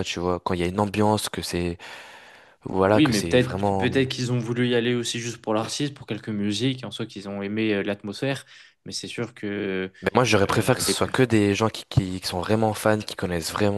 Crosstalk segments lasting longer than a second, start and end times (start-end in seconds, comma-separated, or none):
2.8-4.0